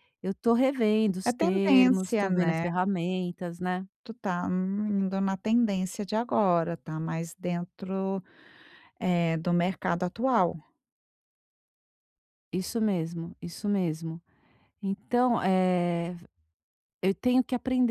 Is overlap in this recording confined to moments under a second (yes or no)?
no